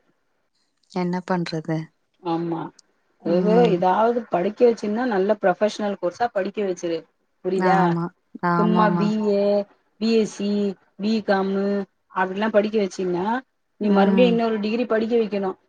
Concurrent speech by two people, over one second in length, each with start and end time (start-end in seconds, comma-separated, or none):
none